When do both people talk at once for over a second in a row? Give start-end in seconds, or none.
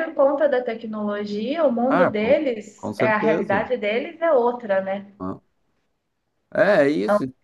1.9-3.7